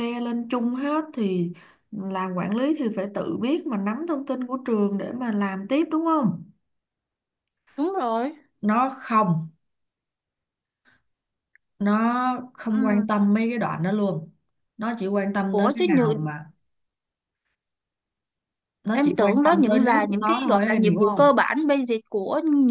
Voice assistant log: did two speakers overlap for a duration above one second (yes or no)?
yes